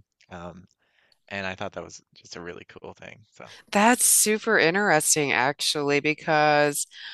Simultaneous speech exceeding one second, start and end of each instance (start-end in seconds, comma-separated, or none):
none